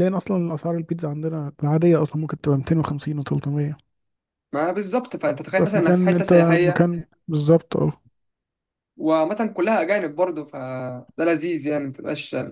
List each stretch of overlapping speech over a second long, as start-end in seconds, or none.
5.5-6.9